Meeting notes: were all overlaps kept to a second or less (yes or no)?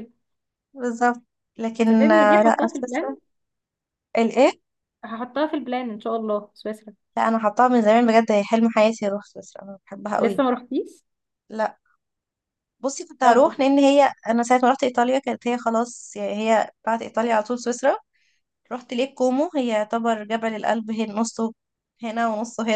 no